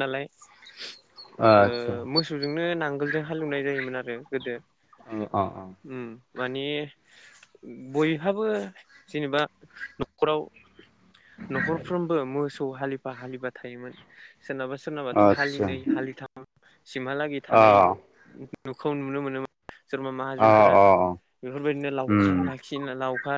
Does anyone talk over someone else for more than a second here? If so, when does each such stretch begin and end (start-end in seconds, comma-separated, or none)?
none